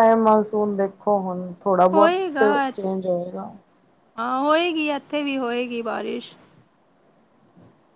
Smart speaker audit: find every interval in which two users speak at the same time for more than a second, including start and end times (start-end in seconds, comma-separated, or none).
none